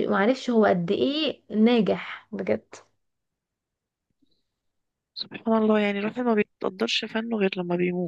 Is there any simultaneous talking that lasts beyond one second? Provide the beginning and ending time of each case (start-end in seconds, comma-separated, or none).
none